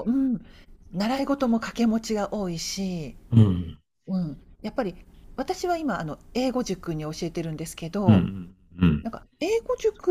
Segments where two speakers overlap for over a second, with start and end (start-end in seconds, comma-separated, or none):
none